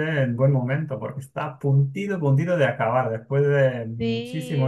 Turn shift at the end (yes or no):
yes